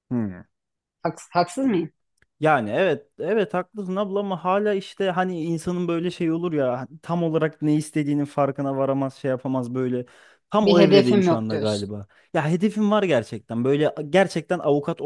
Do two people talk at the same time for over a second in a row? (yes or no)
yes